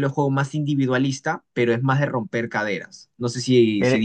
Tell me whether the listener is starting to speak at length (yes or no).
yes